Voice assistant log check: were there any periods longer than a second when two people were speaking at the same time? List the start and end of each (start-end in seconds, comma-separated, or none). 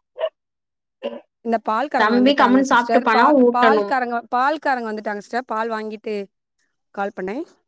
2.0-3.9